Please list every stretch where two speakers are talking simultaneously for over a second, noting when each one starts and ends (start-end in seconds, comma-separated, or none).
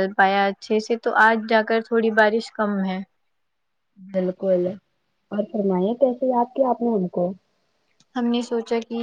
none